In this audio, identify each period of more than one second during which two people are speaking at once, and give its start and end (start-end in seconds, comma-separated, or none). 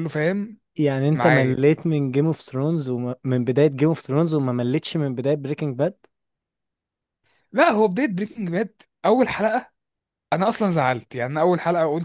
none